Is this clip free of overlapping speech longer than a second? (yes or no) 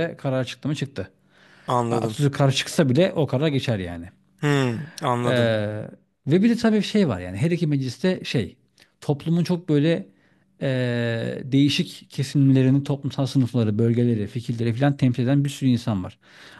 yes